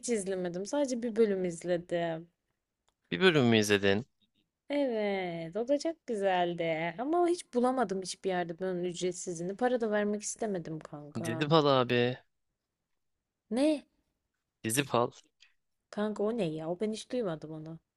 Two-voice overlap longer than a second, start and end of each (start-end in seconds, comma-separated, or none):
none